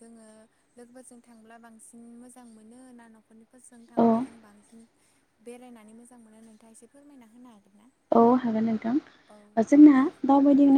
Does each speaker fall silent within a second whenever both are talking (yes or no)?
yes